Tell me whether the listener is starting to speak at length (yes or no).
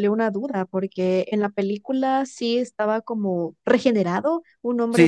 yes